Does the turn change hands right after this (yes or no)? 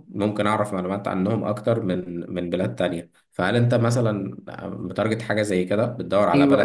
yes